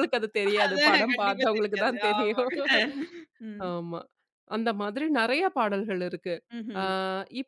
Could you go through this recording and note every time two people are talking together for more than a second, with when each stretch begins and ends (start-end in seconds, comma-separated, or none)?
0.6-2.5